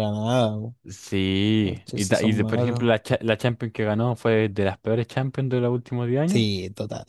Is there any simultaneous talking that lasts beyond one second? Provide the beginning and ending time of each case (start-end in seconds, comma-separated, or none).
1.6-2.9